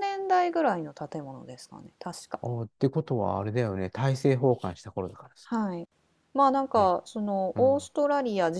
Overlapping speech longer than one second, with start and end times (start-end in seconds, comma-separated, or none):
none